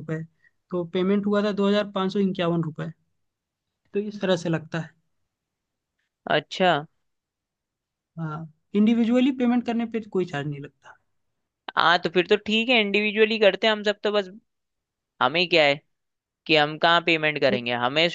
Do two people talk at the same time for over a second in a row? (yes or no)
no